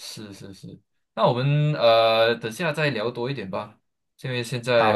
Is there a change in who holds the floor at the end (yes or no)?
no